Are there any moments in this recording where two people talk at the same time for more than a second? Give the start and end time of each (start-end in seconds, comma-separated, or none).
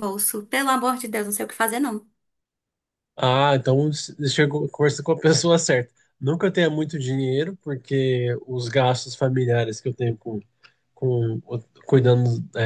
none